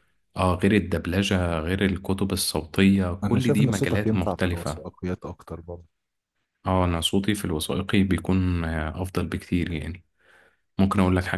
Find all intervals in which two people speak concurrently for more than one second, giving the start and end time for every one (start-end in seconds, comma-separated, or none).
3.2-4.8